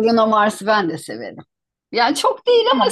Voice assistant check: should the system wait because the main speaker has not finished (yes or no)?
no